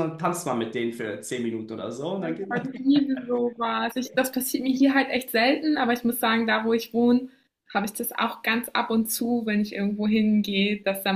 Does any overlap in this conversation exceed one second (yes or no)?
no